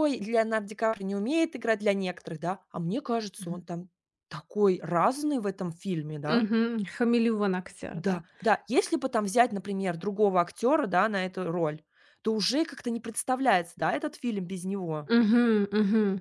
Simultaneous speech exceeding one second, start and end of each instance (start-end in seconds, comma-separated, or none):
none